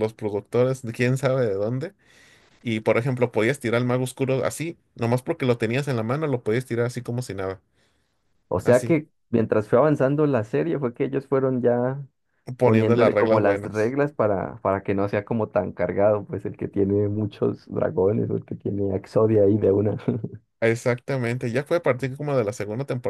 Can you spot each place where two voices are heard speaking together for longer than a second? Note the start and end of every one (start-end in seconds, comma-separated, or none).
12.6-14.0